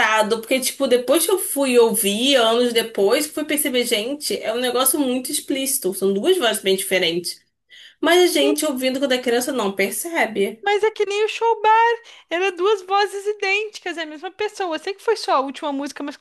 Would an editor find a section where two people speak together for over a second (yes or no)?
no